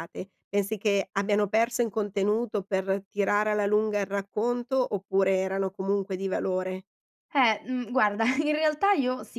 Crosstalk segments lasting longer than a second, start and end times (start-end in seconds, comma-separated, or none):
none